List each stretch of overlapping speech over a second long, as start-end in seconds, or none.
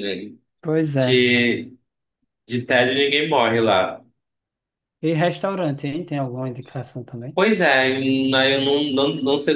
none